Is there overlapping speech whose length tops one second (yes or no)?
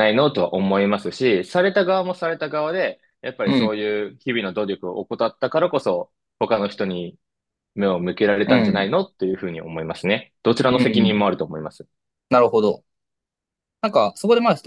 no